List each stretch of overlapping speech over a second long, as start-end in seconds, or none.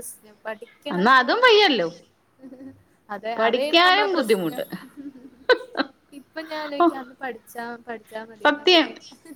3.4-4.6